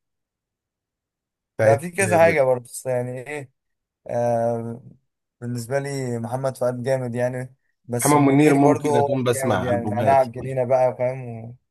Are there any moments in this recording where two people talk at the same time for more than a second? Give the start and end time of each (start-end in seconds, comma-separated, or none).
8.1-10.6